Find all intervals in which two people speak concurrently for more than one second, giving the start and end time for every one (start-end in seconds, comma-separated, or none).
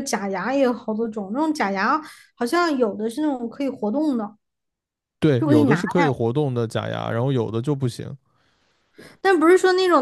none